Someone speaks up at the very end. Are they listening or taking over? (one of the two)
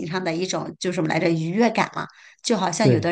listening